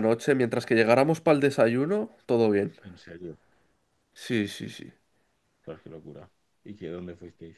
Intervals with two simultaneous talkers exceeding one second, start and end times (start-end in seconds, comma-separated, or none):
none